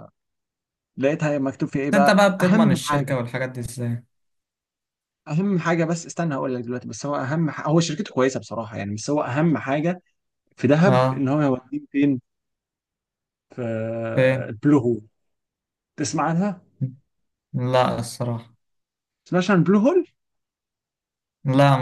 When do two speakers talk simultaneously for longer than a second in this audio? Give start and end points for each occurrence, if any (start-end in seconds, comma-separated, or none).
1.7-3.1